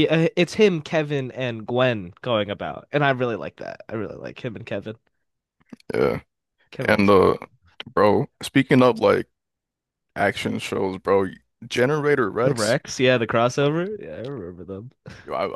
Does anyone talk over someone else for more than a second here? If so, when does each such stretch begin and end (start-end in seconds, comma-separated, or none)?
none